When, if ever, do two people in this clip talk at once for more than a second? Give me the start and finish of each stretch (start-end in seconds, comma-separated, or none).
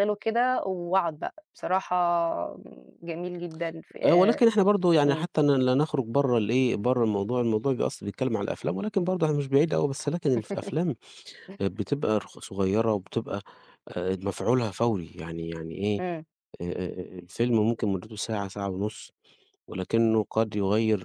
none